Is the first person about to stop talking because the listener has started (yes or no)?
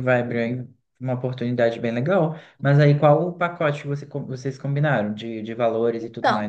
yes